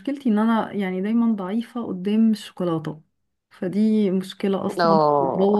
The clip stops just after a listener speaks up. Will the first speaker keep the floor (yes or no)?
yes